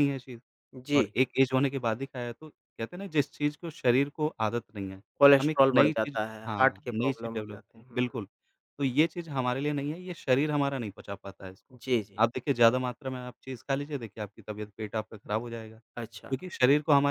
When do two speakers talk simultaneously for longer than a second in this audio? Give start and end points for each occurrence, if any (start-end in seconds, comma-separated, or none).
5.4-8.0